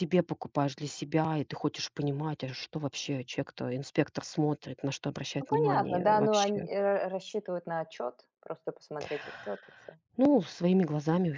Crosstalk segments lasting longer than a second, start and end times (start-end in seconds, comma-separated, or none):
5.4-6.7